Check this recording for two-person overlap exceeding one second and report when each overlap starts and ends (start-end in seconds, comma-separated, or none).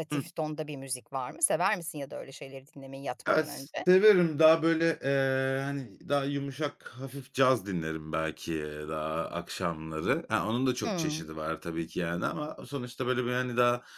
none